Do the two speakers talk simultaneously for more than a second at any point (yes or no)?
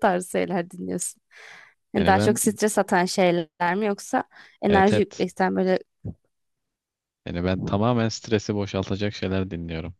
no